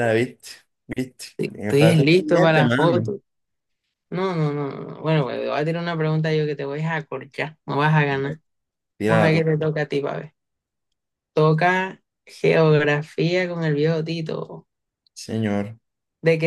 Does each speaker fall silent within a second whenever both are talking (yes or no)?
no